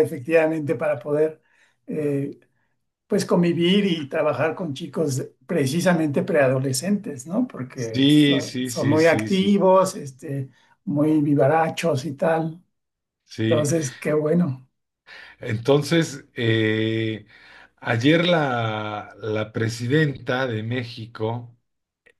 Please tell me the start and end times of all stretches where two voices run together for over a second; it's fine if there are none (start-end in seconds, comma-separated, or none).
7.7-9.6